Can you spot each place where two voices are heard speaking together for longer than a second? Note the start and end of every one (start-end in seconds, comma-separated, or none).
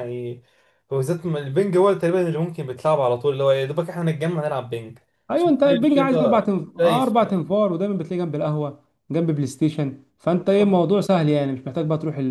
5.3-7.5